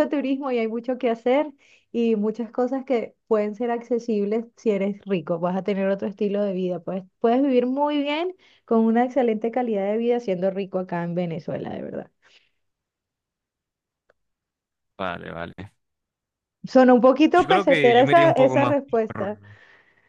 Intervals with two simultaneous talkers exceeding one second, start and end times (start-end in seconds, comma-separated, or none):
17.3-19.3